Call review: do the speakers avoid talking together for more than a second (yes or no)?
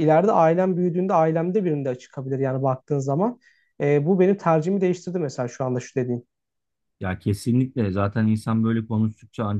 yes